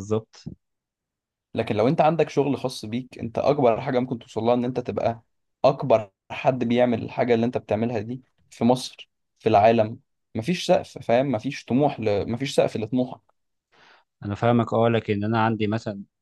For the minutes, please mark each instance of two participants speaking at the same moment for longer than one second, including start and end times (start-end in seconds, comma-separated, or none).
none